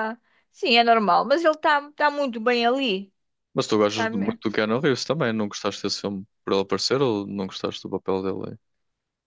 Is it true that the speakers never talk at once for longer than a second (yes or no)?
yes